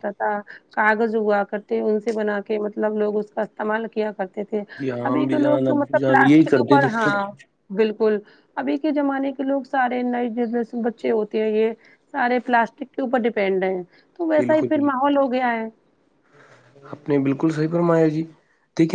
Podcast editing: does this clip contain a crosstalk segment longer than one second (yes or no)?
yes